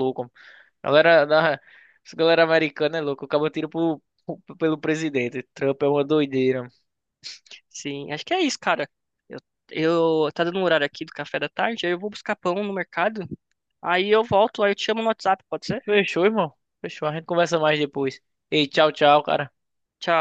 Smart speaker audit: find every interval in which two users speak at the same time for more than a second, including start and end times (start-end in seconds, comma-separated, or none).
none